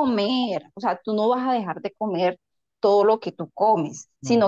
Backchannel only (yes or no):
yes